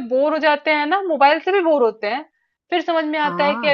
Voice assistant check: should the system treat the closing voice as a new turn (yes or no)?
no